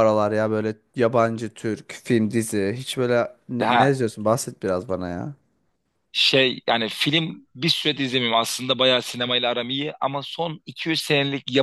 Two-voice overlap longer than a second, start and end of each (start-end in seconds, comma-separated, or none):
none